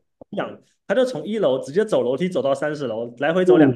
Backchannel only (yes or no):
no